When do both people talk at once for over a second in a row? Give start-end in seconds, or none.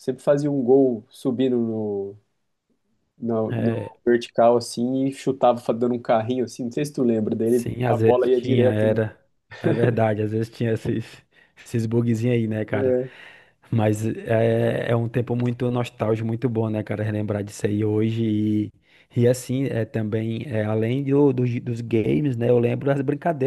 7.4-9.0